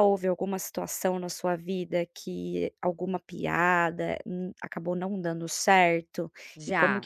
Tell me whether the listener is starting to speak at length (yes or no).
no